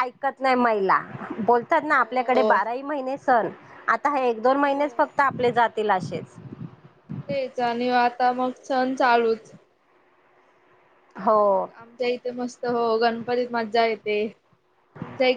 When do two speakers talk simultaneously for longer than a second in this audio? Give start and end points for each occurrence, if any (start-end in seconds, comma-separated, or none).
none